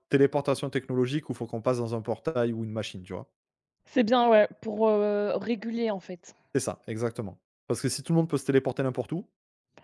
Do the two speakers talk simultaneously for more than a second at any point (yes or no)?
no